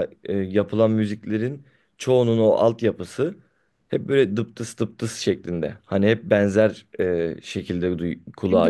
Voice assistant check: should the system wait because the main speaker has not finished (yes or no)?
no